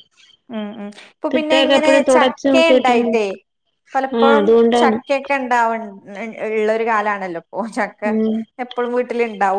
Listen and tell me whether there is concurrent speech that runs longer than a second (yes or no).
yes